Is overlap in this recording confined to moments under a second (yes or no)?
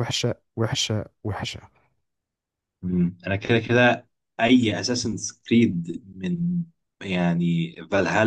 yes